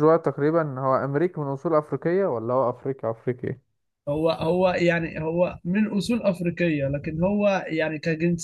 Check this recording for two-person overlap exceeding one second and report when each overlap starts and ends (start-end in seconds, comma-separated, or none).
none